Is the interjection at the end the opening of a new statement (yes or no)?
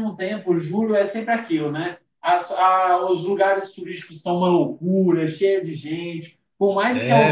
no